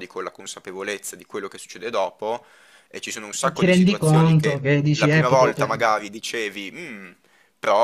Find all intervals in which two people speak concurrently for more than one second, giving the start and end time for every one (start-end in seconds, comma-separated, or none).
3.4-6.0